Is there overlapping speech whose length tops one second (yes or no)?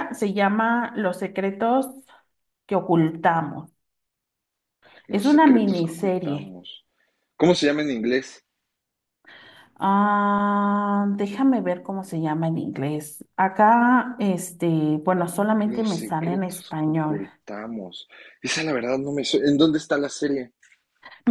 yes